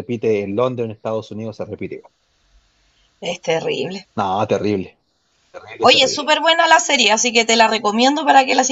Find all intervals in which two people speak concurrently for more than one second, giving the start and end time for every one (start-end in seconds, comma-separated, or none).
none